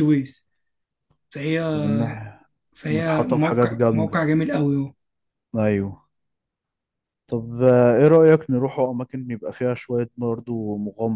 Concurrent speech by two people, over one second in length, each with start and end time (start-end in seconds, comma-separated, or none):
2.9-4.2